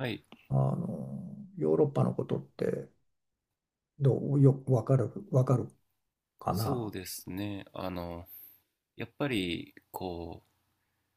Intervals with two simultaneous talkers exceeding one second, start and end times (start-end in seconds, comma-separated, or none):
none